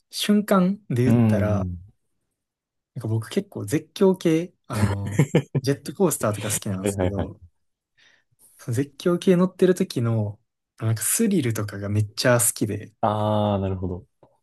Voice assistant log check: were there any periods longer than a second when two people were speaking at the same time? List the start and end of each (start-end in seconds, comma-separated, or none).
none